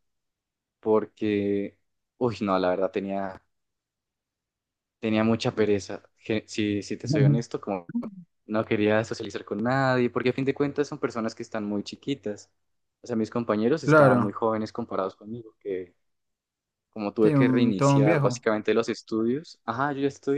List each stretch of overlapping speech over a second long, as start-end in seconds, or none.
17.2-18.4